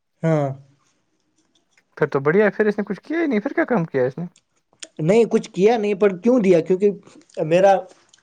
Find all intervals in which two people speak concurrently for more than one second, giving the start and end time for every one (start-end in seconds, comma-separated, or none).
none